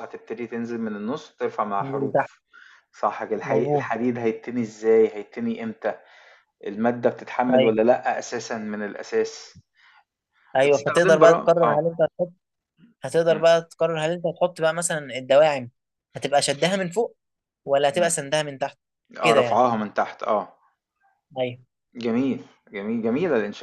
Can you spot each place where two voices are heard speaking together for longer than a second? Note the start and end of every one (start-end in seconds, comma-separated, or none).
10.6-11.9